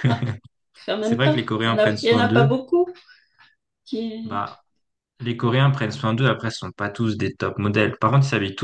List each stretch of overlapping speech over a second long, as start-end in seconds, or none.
1.0-2.6